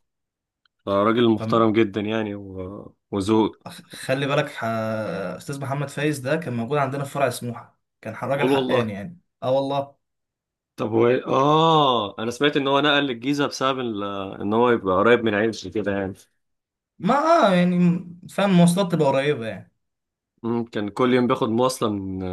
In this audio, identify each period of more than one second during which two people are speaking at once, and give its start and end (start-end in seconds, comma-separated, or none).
none